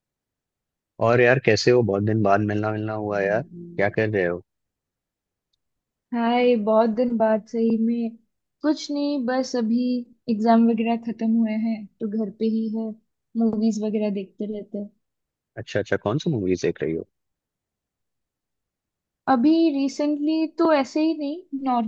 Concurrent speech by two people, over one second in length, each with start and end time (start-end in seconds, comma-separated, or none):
none